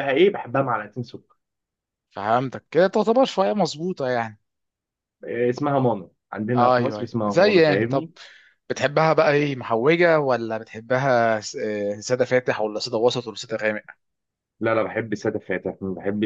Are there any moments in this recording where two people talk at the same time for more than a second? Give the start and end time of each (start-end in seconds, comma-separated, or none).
6.5-8.1